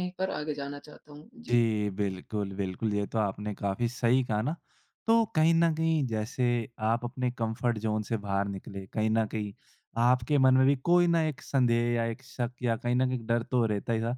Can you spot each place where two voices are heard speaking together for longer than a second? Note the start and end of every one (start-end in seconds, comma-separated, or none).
none